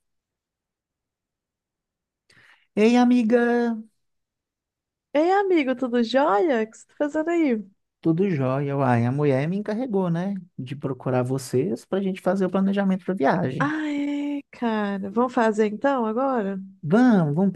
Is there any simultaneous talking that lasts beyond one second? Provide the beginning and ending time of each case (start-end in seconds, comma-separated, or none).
none